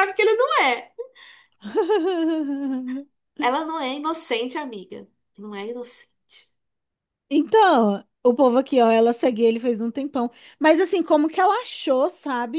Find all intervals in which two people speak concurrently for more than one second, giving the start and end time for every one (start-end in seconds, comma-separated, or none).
none